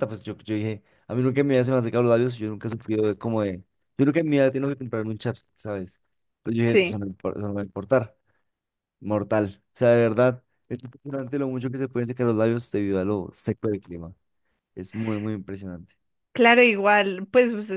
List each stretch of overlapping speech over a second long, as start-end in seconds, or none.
none